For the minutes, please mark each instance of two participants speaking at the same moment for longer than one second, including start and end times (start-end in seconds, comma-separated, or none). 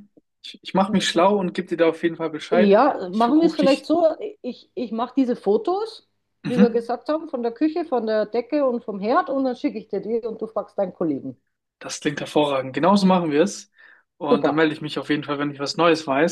2.5-3.9